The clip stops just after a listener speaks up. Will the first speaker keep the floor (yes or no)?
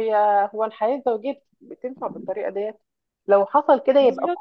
yes